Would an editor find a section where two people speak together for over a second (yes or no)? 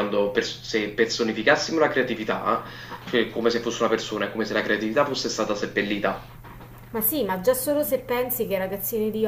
no